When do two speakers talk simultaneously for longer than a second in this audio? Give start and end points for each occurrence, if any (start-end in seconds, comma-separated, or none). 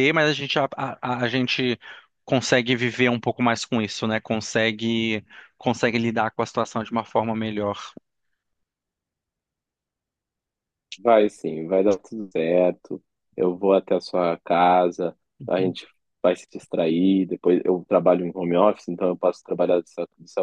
none